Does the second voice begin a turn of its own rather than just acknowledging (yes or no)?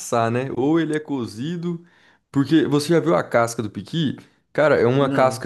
no